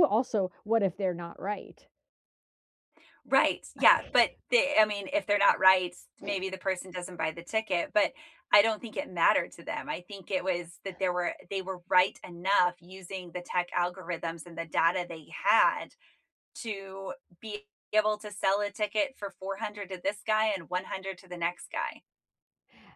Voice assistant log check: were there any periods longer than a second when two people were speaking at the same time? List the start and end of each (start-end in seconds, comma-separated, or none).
none